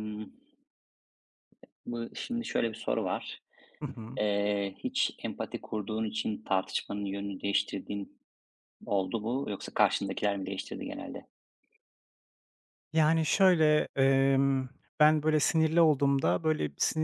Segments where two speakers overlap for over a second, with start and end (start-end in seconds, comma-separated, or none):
none